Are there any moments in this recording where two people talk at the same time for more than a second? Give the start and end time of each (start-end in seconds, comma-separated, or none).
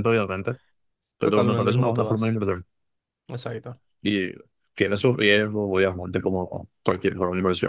1.2-2.4